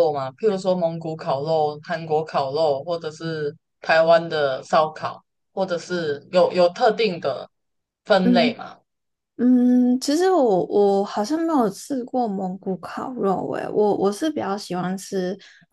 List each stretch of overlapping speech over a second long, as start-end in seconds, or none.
none